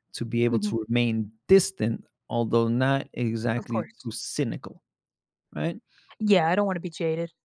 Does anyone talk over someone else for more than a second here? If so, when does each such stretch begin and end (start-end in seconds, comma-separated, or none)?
none